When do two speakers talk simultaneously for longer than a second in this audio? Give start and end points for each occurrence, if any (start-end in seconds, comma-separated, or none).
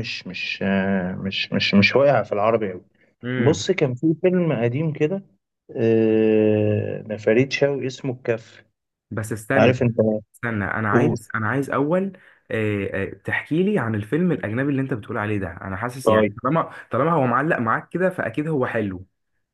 none